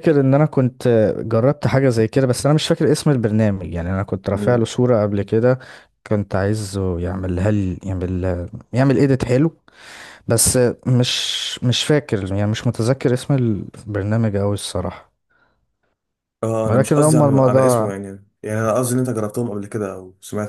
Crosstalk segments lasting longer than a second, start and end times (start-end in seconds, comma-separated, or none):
16.7-17.9